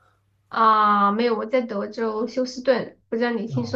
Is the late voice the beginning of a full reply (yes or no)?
yes